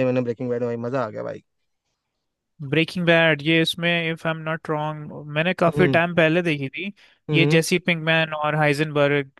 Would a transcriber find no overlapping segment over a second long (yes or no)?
yes